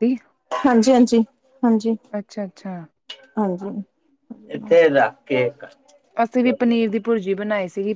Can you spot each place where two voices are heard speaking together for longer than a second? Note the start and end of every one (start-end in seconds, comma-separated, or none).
none